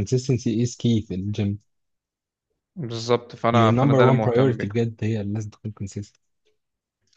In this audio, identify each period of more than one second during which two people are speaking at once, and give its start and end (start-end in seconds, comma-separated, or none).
3.5-4.7